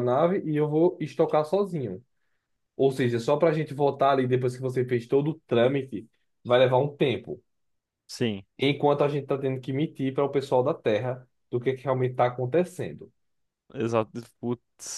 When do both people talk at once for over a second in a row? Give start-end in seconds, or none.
none